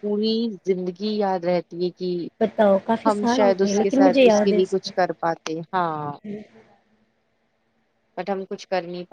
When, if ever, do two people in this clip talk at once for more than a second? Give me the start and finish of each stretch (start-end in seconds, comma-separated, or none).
3.1-4.9